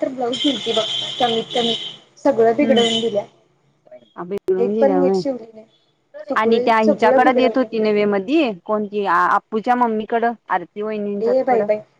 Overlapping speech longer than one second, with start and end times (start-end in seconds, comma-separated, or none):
6.4-7.7